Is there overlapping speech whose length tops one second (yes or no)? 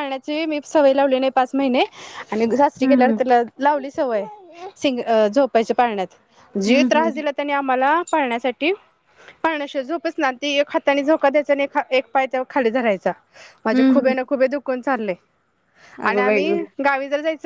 no